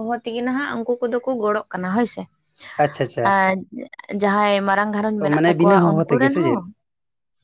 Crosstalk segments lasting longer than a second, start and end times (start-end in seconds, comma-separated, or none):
5.2-6.6